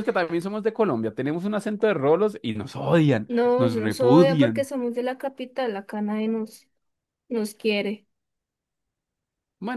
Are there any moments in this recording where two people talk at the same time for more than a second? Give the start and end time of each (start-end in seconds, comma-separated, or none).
3.3-4.7